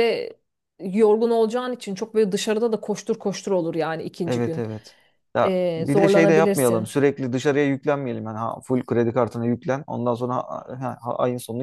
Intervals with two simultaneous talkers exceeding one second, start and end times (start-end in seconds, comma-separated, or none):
5.4-7.0